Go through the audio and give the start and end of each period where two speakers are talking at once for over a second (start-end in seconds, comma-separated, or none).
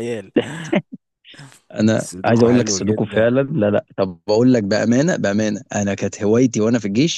2.0-3.3